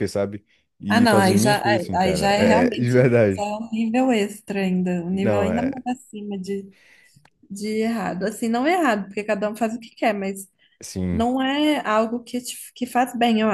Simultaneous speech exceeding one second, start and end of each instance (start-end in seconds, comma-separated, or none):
0.9-3.5